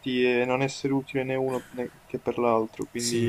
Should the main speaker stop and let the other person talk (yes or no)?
yes